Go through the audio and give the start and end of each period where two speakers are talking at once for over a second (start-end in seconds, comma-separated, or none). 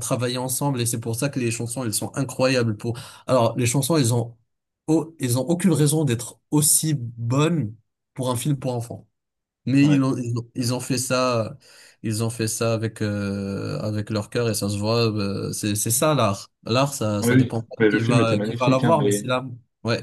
17.2-19.3